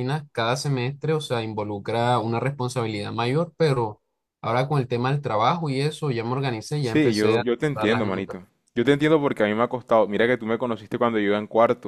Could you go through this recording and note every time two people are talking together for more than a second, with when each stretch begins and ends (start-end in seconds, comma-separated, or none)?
6.8-8.4